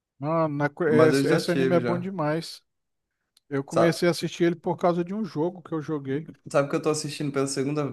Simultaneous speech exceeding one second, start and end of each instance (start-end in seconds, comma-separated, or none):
0.9-2.1